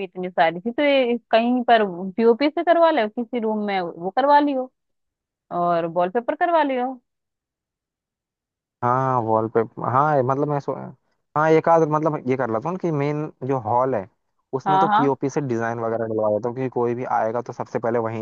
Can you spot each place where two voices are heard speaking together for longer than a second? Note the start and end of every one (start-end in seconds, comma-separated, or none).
none